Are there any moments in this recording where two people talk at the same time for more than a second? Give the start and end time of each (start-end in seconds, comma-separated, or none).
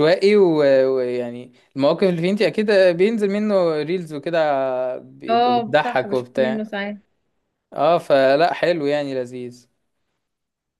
5.3-6.7